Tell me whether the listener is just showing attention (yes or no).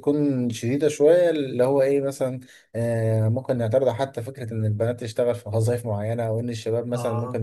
yes